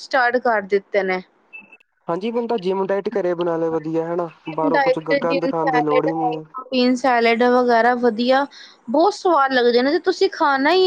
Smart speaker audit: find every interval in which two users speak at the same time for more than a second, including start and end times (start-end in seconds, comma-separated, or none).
none